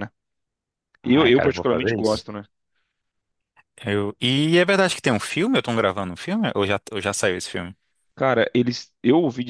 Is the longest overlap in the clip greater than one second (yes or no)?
yes